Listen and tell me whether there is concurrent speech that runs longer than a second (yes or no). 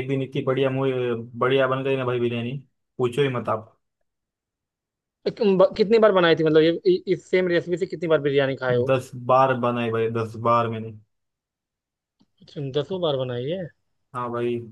no